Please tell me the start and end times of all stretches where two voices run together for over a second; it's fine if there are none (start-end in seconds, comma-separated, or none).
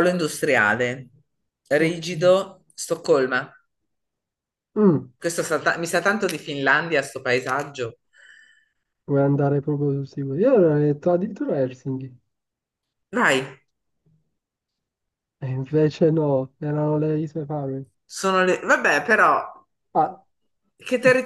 none